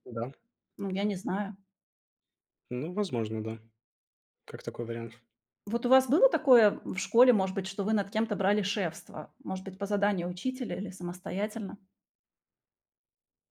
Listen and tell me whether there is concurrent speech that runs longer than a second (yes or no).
no